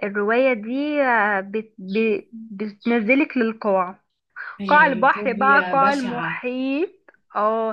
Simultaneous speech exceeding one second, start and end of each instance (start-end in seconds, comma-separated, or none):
4.7-6.4